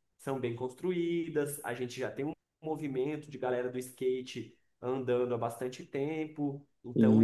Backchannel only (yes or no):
yes